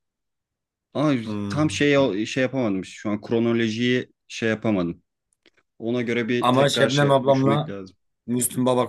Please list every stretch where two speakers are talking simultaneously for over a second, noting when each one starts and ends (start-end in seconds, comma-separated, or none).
6.4-7.8